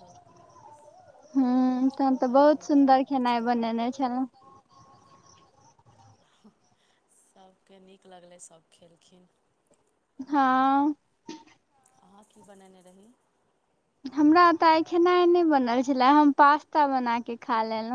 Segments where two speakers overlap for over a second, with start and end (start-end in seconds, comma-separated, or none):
1.9-3.6